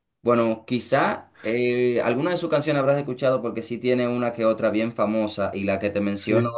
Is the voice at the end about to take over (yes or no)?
no